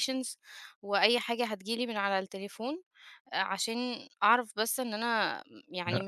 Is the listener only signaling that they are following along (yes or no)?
no